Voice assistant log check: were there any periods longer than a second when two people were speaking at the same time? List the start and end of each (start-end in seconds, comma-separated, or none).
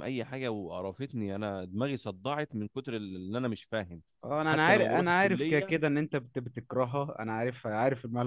4.5-5.7